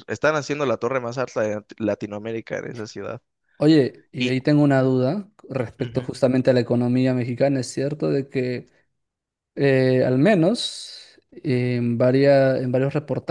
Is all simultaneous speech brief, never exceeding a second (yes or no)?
yes